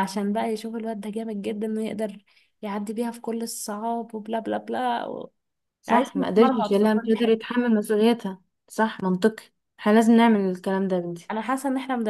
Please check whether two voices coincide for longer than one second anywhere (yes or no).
yes